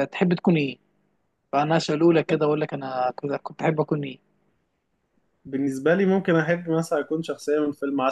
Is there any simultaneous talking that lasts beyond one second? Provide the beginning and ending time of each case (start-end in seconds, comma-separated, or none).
none